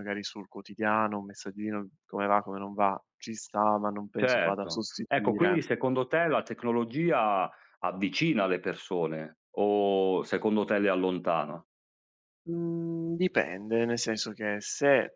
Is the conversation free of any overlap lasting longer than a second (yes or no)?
no